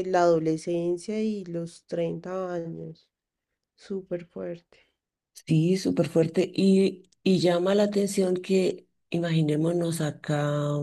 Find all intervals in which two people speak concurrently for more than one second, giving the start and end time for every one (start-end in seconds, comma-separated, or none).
none